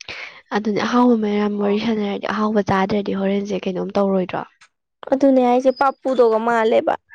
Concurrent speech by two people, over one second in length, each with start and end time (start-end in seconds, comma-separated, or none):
none